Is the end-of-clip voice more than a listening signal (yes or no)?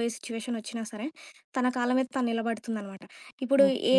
no